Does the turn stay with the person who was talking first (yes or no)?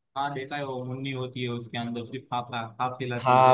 no